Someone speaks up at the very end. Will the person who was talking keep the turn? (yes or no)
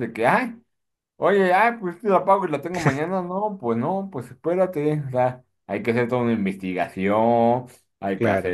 yes